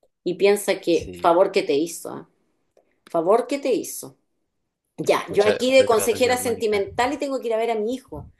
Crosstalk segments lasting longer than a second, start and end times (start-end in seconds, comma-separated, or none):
5.3-6.8